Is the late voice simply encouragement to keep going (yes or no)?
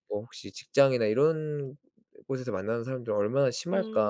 no